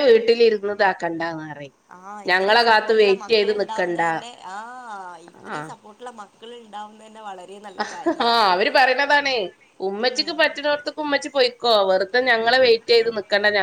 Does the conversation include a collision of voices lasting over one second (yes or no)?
yes